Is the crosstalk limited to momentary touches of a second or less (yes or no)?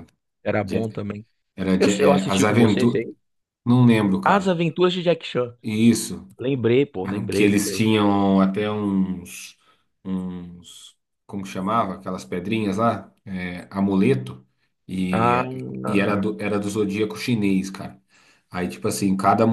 no